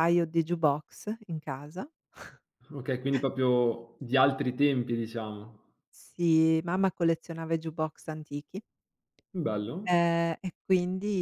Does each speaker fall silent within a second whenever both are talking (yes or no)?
yes